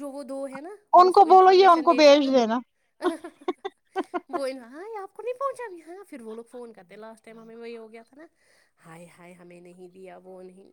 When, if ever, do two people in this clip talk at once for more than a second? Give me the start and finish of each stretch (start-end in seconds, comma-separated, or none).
1.0-2.6